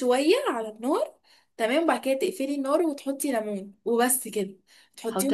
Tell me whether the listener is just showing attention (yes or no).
yes